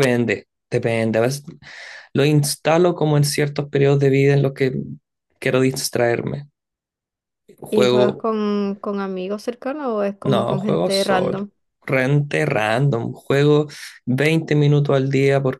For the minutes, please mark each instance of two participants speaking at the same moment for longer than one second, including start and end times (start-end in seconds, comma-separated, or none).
10.2-11.5